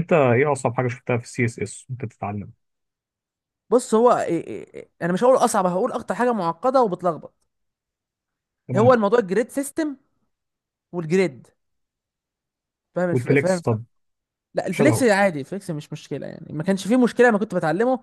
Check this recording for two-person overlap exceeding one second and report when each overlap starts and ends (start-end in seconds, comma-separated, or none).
none